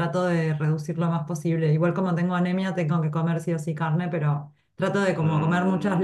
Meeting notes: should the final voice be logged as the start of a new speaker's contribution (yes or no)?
no